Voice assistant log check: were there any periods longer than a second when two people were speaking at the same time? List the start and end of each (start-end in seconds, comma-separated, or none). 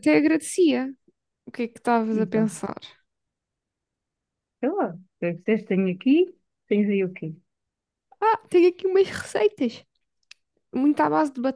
none